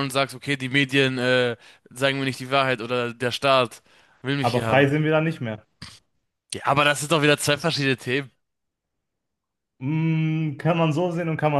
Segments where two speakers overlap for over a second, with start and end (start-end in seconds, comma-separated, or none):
none